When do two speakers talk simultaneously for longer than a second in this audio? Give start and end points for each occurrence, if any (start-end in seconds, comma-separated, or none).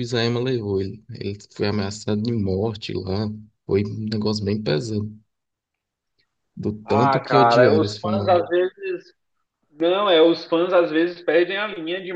6.8-8.5